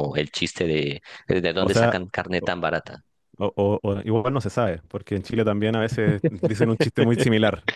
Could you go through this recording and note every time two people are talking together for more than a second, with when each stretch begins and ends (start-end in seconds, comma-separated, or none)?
none